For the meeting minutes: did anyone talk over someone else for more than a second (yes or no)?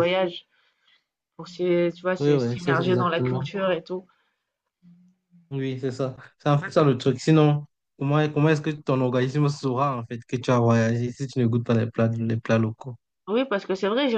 yes